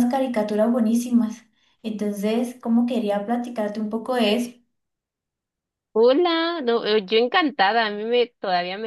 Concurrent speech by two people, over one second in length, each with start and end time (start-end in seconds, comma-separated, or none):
none